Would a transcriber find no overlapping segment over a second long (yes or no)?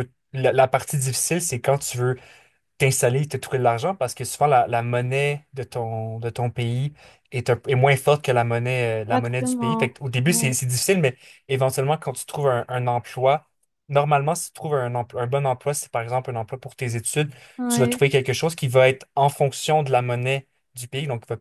no